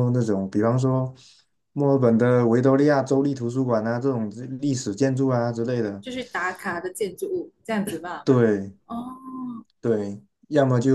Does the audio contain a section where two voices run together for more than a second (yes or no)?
no